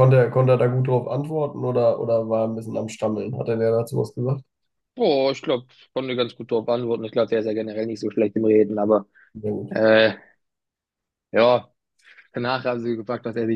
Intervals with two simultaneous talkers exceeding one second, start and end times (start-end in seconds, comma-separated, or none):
none